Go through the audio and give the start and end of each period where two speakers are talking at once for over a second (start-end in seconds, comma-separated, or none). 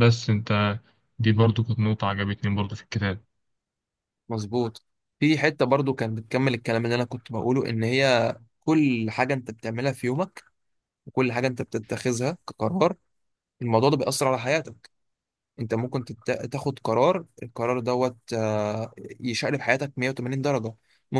none